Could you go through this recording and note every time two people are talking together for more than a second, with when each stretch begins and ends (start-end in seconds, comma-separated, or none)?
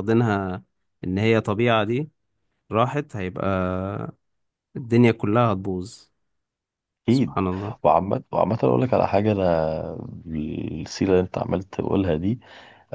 none